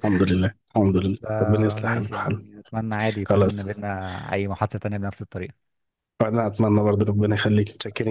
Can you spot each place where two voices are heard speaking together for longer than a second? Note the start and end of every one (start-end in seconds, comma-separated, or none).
1.2-2.4